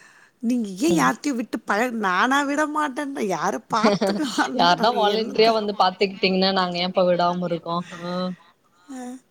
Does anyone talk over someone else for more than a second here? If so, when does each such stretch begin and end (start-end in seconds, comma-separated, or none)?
none